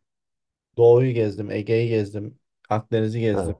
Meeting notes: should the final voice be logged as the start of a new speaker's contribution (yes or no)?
no